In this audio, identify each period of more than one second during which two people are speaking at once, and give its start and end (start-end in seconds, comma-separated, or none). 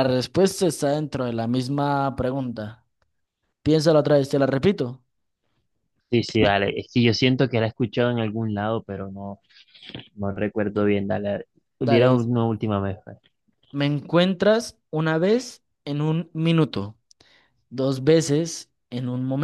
none